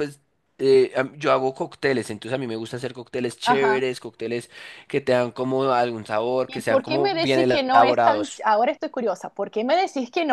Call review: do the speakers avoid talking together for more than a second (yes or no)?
no